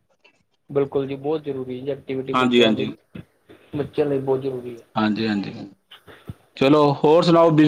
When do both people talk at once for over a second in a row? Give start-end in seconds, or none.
none